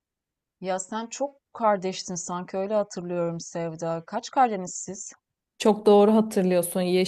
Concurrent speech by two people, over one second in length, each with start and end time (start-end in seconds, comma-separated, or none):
none